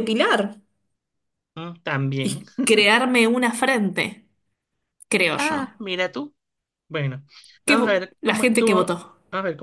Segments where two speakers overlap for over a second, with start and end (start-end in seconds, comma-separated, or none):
7.7-9.0